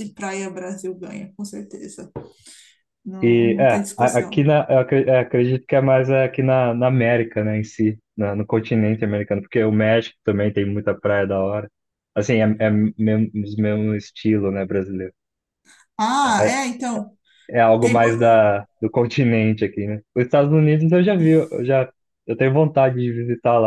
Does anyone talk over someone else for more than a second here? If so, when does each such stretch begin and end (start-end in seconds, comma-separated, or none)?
3.2-4.5